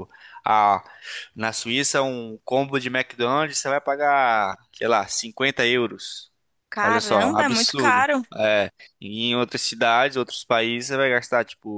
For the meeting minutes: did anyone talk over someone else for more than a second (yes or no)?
yes